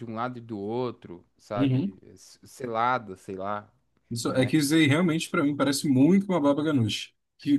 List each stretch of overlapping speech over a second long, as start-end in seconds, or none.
none